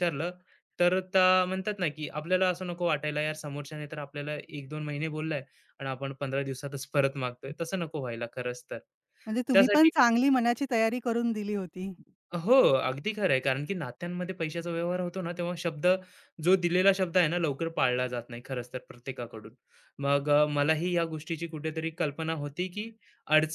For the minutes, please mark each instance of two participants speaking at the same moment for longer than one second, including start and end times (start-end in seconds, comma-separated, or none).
none